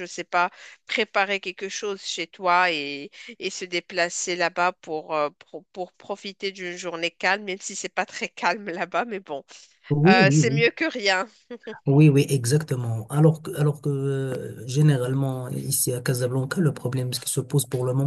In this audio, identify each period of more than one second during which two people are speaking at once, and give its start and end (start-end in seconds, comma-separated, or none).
none